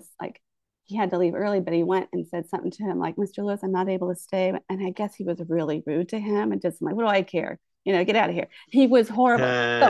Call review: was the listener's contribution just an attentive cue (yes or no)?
yes